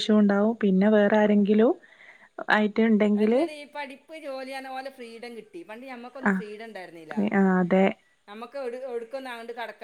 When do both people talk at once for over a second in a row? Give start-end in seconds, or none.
none